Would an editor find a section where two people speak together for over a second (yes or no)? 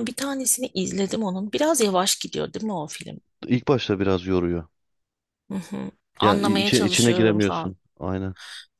yes